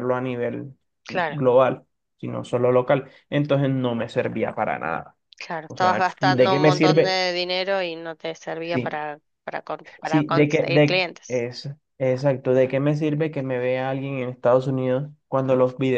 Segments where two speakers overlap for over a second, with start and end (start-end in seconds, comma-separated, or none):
5.7-7.2, 10.0-11.5